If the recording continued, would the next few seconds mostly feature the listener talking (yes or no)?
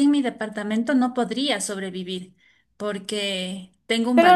yes